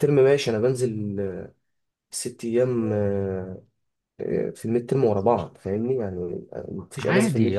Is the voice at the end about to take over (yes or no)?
yes